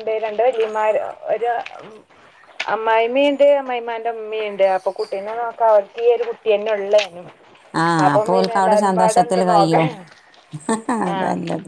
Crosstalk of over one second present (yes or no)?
yes